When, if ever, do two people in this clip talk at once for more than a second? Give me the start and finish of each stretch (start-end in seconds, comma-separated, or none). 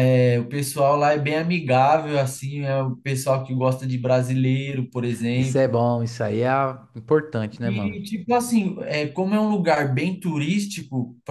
none